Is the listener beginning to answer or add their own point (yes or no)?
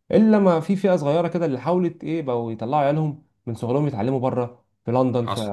no